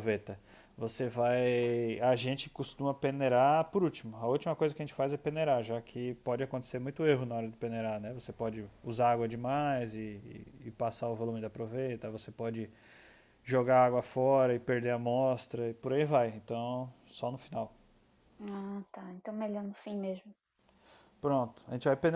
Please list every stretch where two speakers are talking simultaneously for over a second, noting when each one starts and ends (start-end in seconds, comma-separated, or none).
none